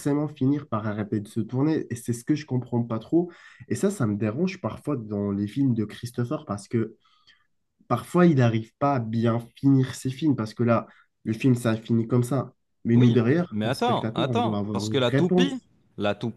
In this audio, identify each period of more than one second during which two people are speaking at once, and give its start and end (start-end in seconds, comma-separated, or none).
12.9-15.5